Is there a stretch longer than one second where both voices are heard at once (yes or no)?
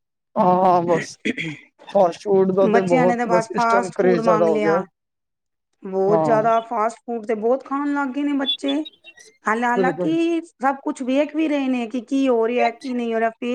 yes